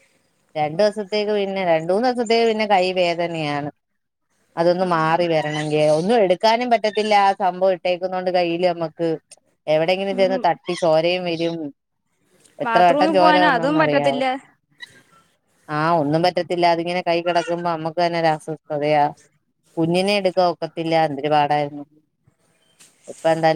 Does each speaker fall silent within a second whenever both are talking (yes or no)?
no